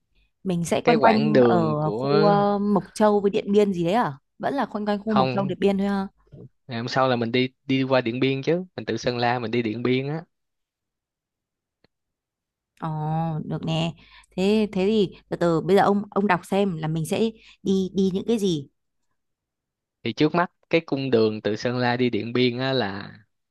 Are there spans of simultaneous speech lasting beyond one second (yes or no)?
yes